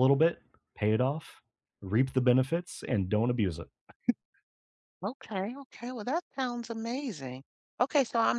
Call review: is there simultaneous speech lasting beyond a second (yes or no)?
no